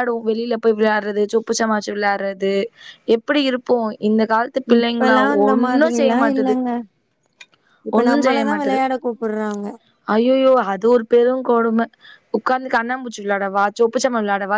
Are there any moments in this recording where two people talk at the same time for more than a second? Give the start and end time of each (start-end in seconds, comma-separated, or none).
4.8-6.6